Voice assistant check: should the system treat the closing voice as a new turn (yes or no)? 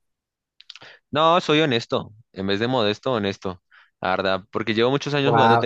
yes